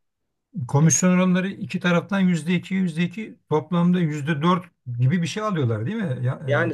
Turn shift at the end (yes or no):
yes